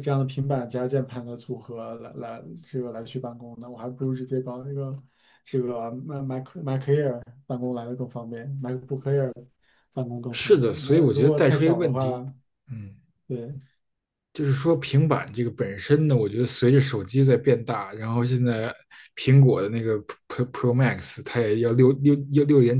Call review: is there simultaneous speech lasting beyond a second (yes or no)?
yes